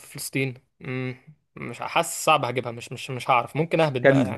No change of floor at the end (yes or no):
no